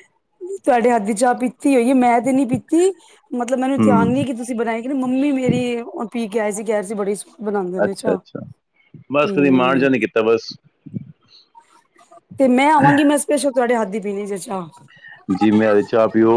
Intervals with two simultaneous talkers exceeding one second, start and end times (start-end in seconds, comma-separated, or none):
none